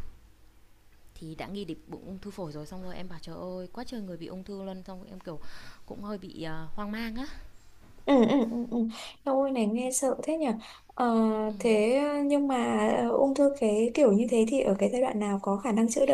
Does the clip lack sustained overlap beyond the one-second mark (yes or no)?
yes